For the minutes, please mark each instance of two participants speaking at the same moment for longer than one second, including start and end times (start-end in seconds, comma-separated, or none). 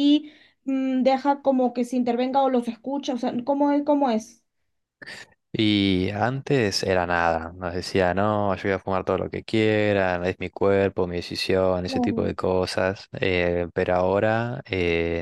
none